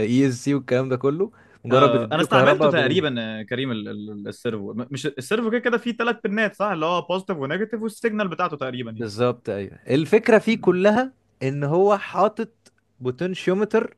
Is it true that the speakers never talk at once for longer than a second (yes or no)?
no